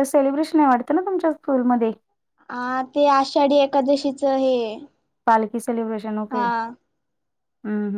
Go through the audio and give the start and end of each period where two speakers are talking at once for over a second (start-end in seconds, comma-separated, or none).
none